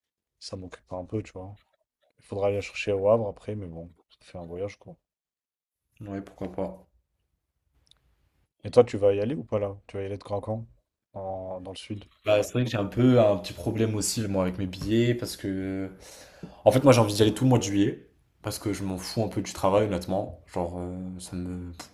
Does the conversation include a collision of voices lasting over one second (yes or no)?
no